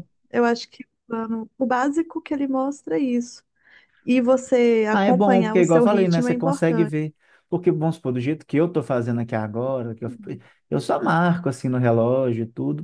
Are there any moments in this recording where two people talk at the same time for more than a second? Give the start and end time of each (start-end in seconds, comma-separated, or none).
4.9-6.9